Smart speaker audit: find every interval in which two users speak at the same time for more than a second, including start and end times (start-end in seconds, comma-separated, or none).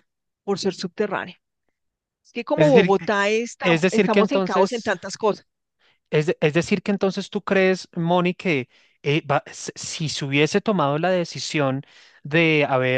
3.6-4.9